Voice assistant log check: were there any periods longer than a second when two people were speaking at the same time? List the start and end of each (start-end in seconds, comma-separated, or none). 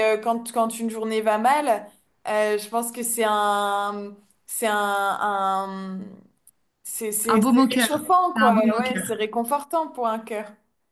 7.3-9.1